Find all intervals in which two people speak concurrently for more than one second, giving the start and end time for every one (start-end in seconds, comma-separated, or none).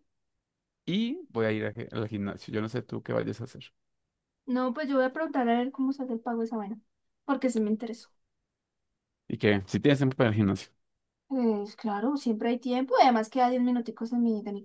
none